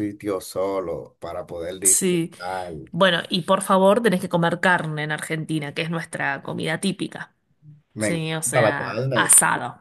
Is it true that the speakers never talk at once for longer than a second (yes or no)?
no